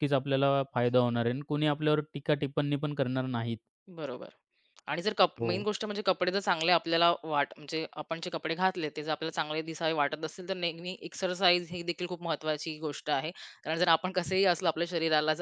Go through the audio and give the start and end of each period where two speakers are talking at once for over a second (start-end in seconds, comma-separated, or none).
none